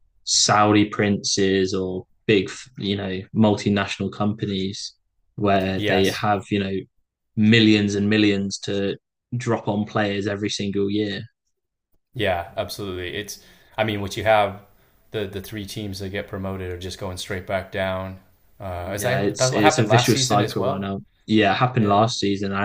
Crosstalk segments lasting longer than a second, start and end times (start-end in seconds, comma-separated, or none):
18.8-20.9